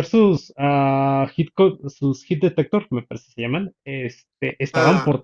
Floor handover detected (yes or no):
no